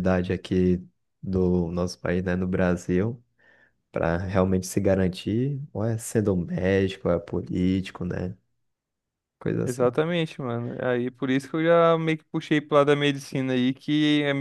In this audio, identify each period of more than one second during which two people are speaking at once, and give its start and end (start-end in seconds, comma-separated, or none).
none